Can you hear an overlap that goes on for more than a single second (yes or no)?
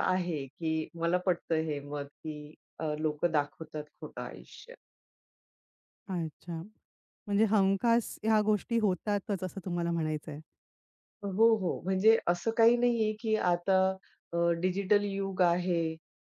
no